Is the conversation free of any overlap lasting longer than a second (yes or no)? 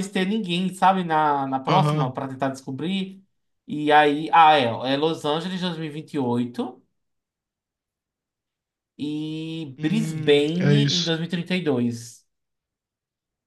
no